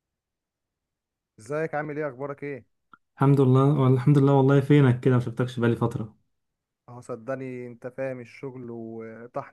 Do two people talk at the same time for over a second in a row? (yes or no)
no